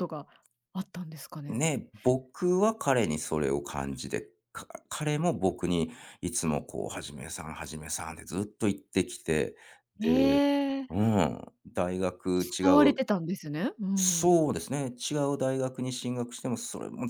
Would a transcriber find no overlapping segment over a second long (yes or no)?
yes